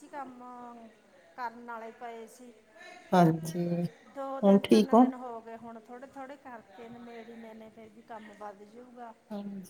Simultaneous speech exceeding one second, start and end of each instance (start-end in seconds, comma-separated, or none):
none